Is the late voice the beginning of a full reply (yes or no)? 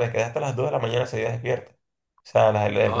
no